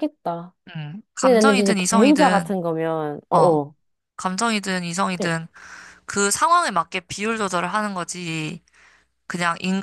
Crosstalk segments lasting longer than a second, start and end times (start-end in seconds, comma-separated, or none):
1.2-2.5